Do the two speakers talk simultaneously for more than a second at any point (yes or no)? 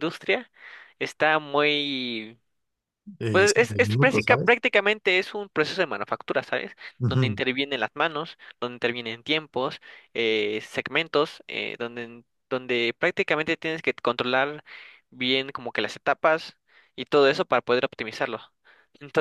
yes